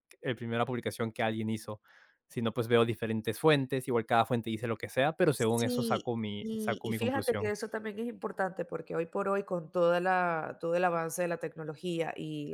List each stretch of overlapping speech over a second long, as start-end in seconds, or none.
5.3-7.5